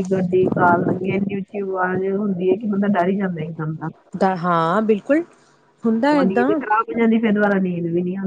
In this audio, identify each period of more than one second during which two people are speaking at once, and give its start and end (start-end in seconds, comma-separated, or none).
none